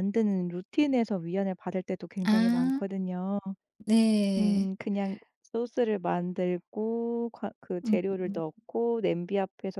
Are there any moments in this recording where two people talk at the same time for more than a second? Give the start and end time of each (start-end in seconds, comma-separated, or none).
none